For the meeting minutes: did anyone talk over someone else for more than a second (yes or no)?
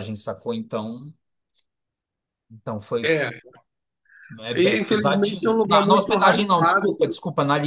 yes